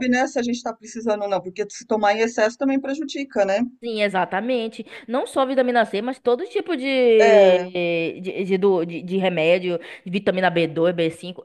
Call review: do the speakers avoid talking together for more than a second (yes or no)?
yes